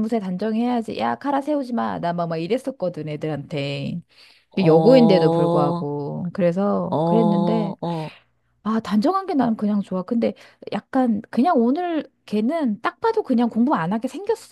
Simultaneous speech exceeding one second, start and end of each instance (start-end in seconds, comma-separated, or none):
4.6-5.9